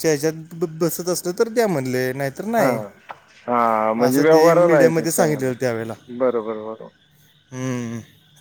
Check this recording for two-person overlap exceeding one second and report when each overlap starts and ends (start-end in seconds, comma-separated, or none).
4.1-5.5